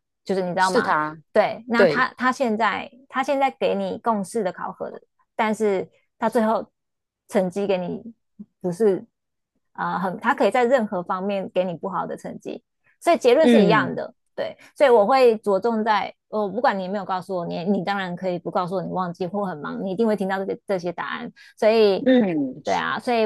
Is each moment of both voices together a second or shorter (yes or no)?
yes